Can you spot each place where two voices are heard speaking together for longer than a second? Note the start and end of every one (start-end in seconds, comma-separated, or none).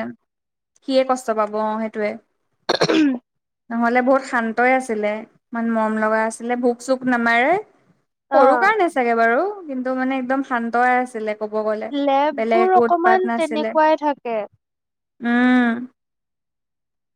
12.4-13.8